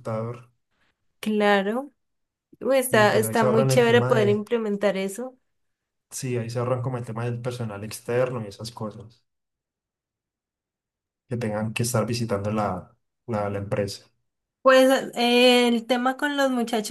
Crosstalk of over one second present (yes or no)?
yes